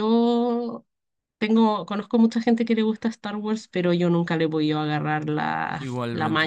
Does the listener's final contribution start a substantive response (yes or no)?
yes